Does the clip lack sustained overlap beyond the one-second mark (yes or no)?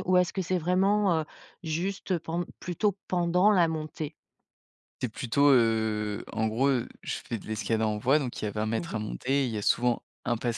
yes